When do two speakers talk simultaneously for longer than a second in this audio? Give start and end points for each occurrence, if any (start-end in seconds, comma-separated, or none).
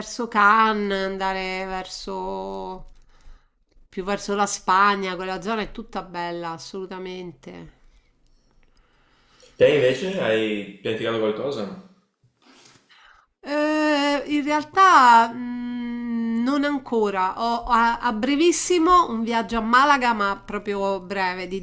none